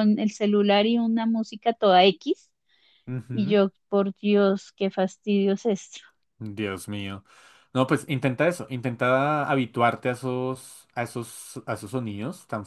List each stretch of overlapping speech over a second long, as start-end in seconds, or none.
none